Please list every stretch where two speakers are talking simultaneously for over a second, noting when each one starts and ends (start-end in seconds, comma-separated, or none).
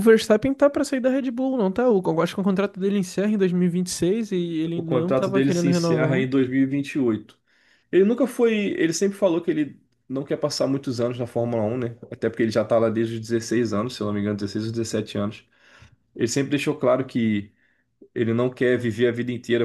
4.7-6.3